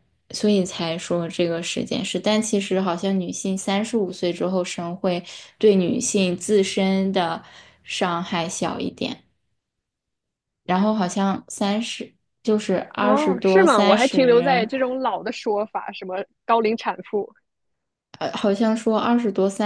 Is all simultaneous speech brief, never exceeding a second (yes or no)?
no